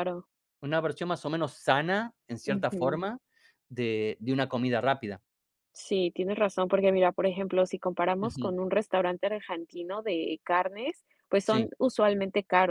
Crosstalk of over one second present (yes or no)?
no